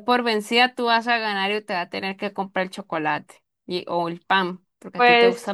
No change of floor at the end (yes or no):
no